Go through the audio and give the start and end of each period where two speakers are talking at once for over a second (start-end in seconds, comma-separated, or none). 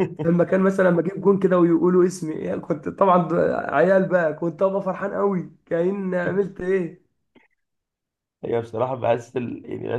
none